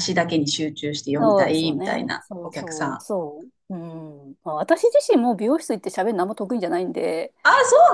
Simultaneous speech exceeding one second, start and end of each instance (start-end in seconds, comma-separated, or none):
1.2-3.0